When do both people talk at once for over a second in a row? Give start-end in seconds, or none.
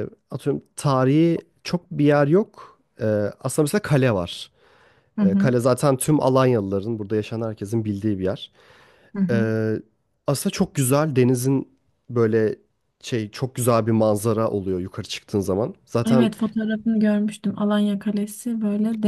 none